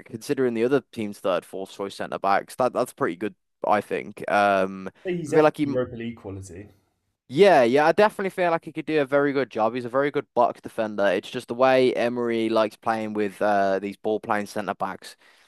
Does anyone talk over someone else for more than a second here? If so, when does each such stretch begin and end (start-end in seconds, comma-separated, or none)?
none